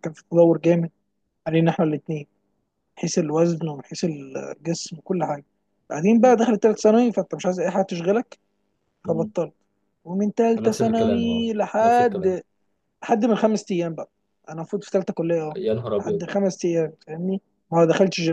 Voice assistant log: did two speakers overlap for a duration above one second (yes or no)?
yes